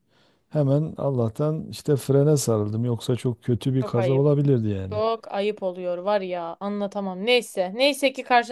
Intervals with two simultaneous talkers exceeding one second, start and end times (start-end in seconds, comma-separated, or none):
none